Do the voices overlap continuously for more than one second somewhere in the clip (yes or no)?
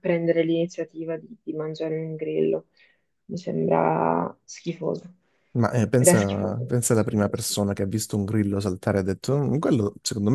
yes